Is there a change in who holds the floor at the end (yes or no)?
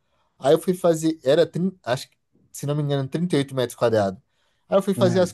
no